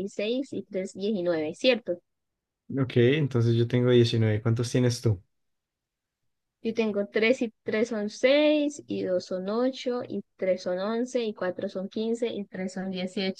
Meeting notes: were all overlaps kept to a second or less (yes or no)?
yes